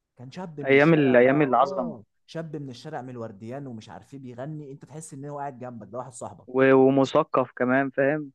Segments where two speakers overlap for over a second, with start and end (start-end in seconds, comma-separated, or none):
0.6-2.0